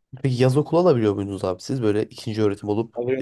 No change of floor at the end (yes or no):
no